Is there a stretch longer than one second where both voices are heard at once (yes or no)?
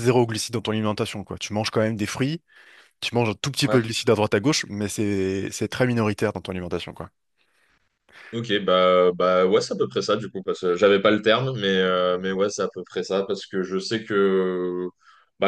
no